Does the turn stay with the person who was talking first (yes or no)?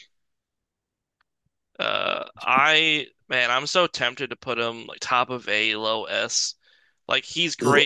no